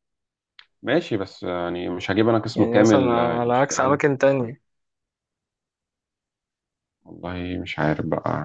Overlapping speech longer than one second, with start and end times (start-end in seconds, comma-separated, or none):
2.5-4.0